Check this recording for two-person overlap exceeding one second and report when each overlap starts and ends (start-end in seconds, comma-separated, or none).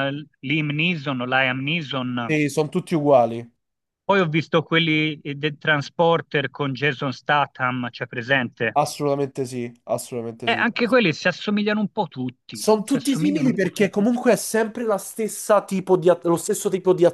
12.6-13.9